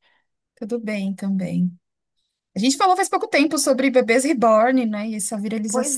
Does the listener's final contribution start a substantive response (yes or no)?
yes